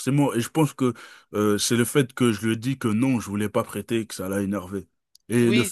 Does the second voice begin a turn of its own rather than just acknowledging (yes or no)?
yes